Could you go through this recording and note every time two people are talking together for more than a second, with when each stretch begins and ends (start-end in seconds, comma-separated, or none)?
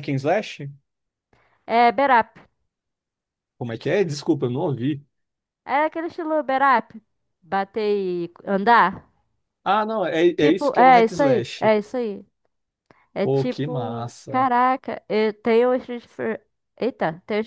10.3-11.7, 13.2-14.5